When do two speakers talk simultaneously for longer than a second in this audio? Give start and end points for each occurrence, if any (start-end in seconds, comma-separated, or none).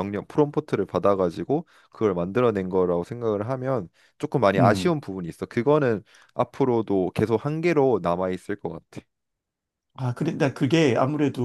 none